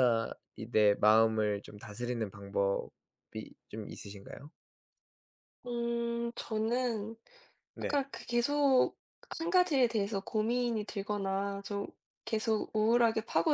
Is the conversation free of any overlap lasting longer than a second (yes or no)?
yes